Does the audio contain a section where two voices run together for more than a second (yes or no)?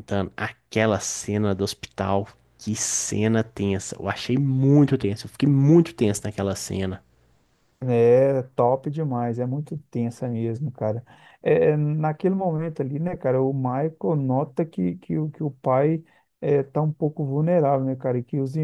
no